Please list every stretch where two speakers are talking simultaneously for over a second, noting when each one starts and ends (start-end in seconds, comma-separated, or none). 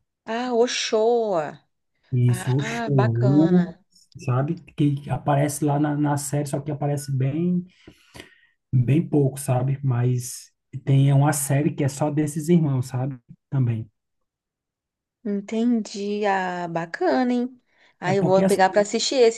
2.3-3.8